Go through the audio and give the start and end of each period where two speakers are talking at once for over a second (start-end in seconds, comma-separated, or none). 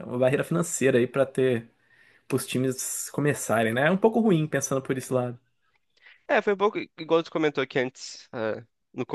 none